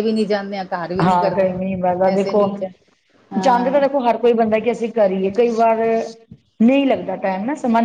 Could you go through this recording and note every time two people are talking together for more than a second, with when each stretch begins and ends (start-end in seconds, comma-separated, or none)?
none